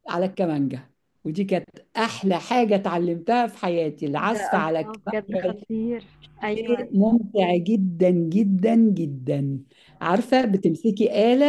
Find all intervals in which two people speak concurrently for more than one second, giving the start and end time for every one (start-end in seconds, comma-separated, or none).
4.2-5.7